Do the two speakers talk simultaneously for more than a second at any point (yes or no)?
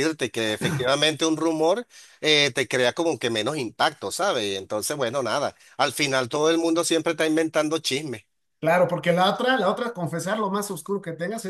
no